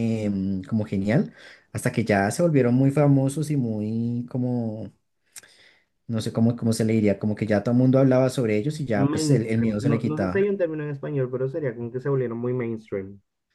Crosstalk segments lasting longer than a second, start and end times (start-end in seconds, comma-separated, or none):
8.9-10.4